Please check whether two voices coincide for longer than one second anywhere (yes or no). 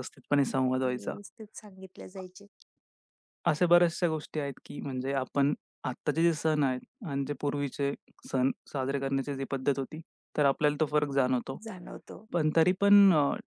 no